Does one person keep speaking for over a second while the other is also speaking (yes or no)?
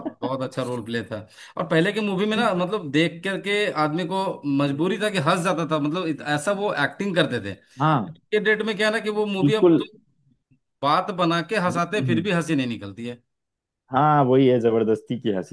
no